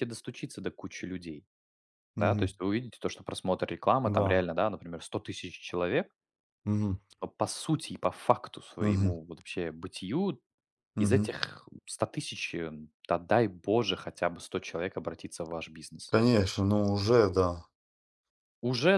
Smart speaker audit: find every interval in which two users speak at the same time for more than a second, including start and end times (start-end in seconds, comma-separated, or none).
none